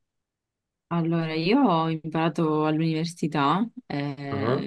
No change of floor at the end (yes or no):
yes